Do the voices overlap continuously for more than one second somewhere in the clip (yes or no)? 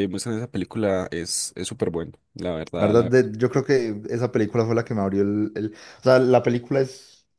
no